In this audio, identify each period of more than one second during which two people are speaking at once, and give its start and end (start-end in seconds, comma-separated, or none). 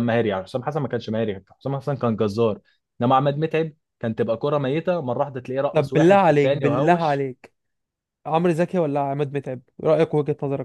5.7-7.3